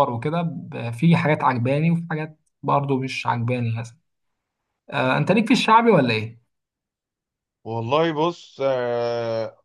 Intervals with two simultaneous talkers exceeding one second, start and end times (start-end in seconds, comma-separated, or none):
none